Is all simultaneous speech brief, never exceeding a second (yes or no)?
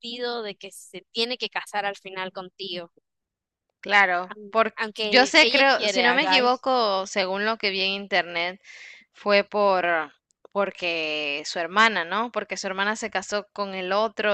no